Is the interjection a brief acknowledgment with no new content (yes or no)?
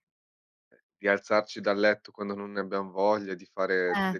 yes